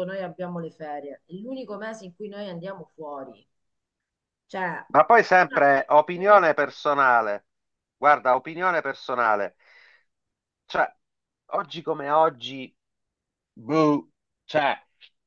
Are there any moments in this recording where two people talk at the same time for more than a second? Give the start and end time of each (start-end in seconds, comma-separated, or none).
5.3-6.7